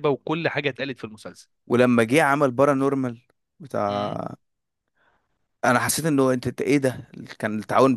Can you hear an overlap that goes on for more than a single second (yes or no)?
no